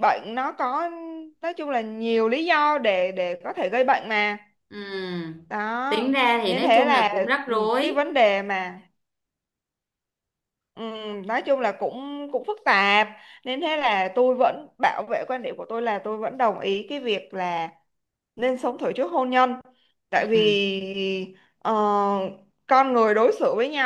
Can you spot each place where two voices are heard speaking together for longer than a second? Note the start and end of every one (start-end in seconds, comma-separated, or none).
5.9-8.1